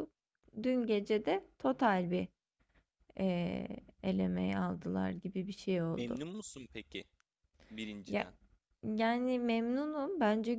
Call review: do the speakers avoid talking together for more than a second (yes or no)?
yes